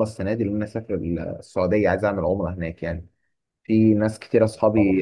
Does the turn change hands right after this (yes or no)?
no